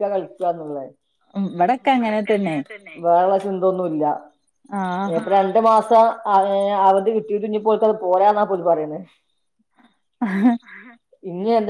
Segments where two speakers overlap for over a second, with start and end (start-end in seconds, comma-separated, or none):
none